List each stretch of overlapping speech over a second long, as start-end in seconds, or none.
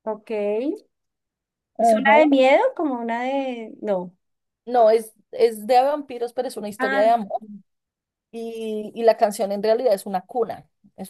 none